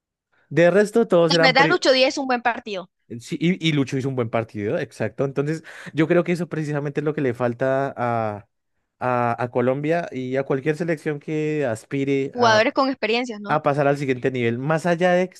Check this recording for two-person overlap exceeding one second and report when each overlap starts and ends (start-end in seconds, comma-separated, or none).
none